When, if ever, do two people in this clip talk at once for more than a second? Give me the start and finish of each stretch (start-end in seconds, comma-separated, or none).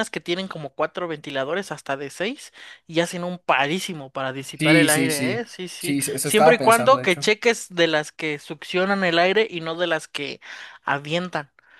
4.6-7.2